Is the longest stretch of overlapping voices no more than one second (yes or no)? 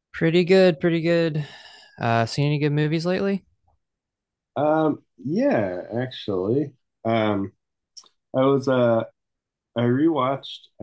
yes